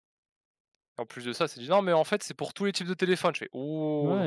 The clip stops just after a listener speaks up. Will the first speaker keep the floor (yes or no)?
no